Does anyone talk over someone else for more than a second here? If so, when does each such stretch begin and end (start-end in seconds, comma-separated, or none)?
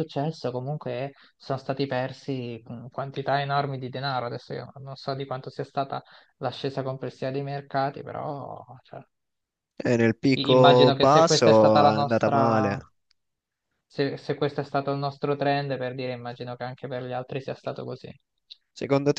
10.3-12.8